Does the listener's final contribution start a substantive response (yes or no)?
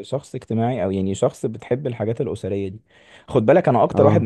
no